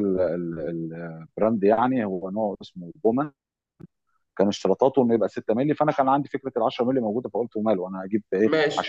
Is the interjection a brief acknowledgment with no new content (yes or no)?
yes